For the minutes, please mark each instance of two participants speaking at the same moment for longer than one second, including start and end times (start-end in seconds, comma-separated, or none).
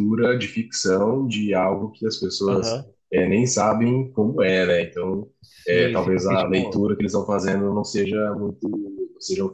5.7-6.9